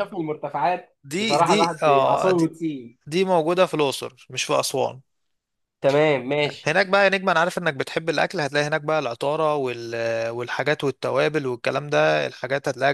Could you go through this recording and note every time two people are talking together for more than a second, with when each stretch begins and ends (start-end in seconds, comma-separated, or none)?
1.0-2.3